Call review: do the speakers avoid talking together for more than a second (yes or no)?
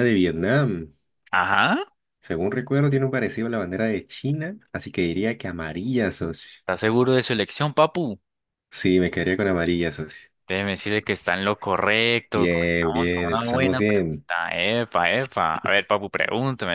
no